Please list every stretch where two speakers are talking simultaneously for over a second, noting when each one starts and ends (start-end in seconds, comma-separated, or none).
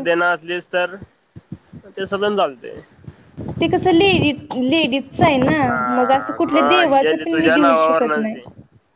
6.0-8.4